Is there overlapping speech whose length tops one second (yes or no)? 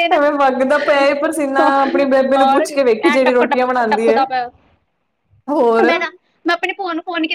yes